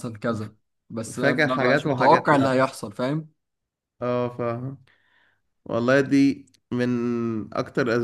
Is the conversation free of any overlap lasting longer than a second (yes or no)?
no